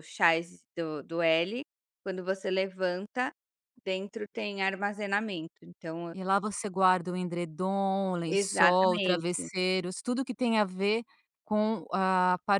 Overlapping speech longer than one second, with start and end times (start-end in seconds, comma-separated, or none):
8.3-9.5